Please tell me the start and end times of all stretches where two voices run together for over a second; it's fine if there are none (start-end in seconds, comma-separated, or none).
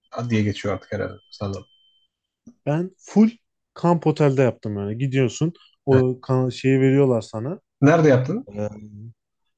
none